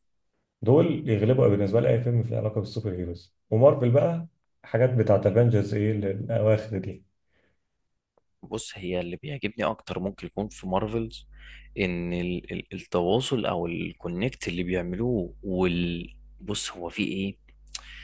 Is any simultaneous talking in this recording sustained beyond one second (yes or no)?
no